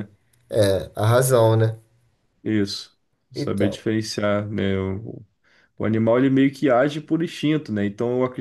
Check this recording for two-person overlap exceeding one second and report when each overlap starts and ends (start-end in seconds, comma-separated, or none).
none